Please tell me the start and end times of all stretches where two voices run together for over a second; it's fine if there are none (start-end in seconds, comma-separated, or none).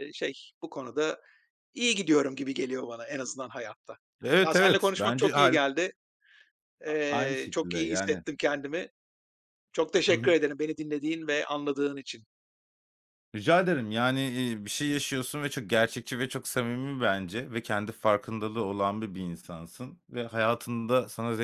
4.4-5.7, 6.9-8.2